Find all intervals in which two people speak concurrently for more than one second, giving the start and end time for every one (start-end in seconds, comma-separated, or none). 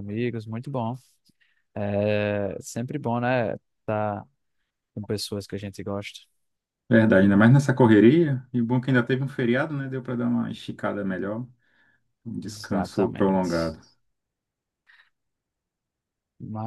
12.4-13.8